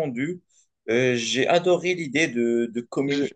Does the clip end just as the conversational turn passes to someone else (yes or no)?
no